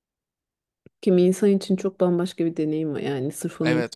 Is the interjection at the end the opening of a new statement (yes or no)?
no